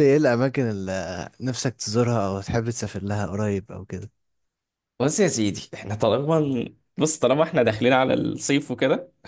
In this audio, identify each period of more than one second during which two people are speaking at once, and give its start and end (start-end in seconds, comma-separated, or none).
none